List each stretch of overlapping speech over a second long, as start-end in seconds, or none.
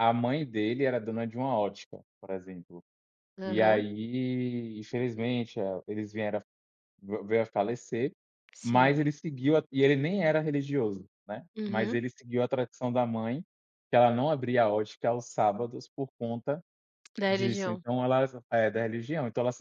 none